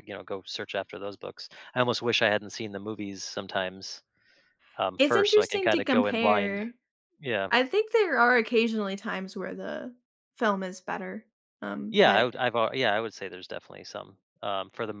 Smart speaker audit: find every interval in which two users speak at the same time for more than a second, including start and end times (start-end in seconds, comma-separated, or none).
5.0-6.6